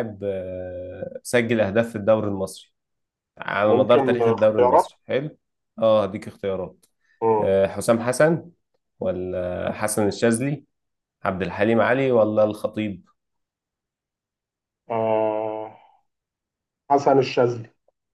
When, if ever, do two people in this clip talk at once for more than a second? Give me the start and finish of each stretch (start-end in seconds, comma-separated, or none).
3.6-4.9